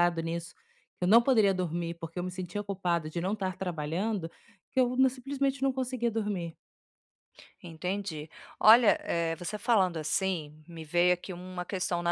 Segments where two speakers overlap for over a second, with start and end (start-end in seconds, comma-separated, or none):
none